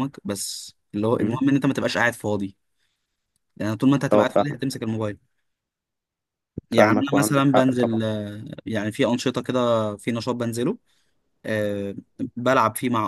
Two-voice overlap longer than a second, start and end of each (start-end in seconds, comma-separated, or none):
6.7-8.0